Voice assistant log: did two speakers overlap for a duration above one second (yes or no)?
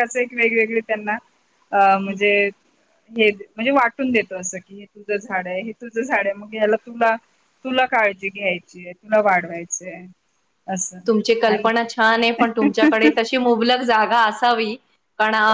no